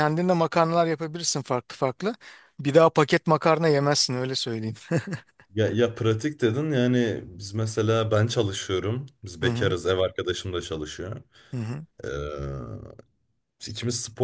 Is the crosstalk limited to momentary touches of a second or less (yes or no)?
yes